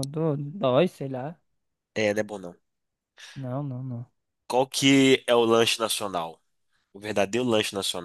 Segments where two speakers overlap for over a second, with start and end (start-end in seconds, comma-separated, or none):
none